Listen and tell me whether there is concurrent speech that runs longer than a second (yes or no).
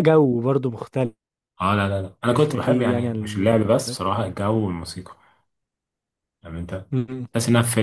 yes